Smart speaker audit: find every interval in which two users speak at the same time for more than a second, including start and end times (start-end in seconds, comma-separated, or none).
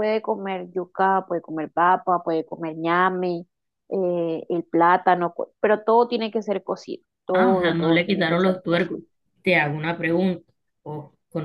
7.3-9.0